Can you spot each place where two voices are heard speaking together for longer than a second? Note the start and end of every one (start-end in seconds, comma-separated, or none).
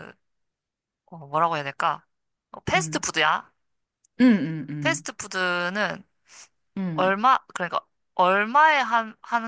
none